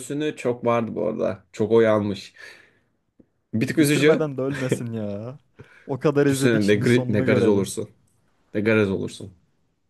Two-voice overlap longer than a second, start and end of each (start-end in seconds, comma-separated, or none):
6.3-7.7